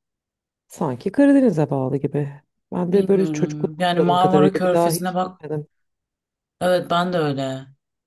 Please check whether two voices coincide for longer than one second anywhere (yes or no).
yes